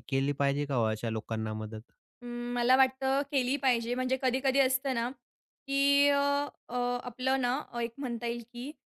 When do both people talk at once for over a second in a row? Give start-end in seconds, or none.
none